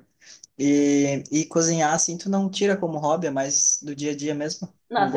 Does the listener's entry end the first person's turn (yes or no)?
yes